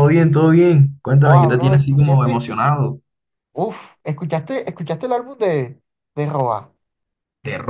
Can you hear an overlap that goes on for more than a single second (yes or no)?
yes